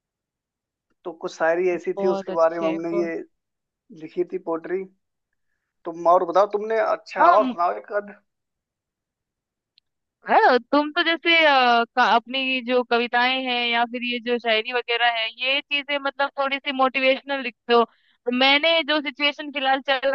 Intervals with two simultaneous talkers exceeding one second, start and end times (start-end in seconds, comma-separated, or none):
1.7-3.1